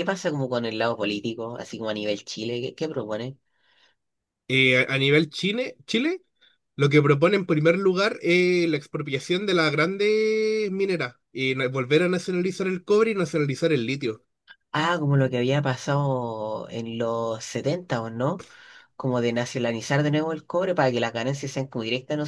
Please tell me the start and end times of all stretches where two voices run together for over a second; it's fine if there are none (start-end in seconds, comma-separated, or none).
none